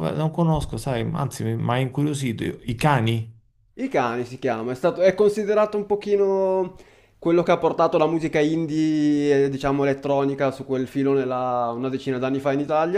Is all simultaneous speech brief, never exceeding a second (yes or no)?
yes